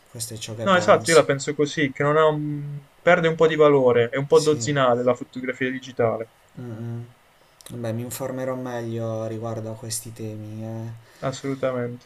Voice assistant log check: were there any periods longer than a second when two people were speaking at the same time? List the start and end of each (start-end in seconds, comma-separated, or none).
none